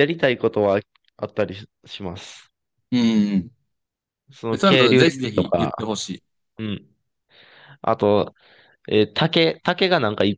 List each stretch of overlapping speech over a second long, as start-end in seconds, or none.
4.5-5.7